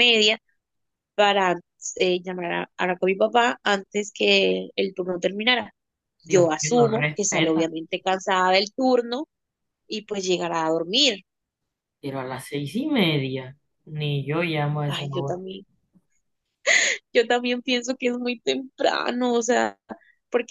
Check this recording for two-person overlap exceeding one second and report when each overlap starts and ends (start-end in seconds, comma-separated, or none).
6.2-7.7